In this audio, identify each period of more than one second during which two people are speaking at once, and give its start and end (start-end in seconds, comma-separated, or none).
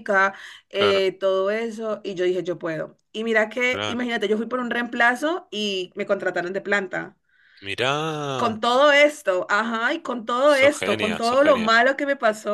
10.4-11.7